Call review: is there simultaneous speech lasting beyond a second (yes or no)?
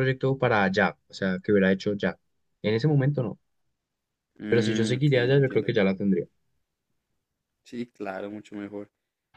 yes